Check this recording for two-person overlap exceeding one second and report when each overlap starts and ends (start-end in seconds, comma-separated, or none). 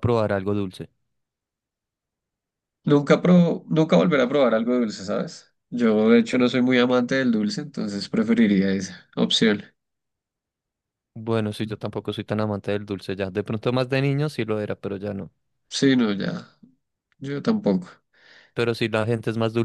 none